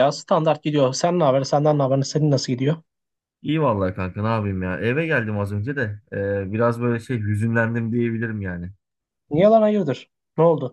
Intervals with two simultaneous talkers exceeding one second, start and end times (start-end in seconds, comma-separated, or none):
none